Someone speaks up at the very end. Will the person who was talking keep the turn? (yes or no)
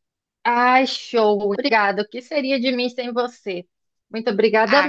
no